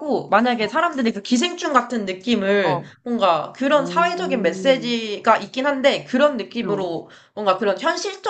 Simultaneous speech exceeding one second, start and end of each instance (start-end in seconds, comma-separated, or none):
3.7-5.0